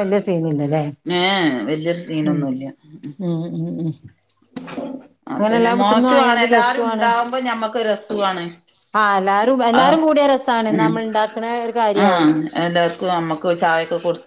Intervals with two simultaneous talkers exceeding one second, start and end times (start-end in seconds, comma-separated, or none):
5.4-7.1